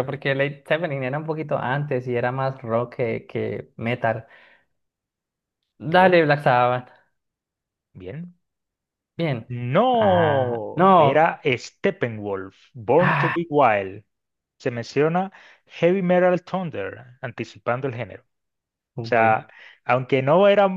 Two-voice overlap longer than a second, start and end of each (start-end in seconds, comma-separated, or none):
9.9-11.2